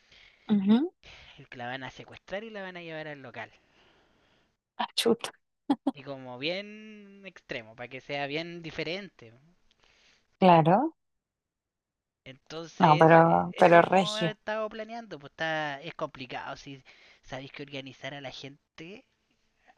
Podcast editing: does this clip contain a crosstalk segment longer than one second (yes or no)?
yes